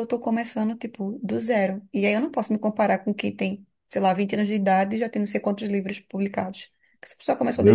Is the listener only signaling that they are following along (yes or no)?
no